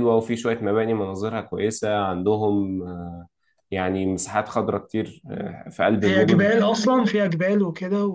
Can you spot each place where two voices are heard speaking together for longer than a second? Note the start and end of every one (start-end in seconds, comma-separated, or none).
none